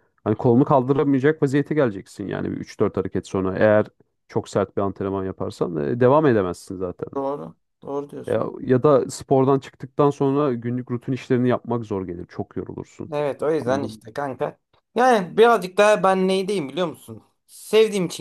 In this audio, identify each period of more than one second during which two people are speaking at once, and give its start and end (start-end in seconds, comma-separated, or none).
none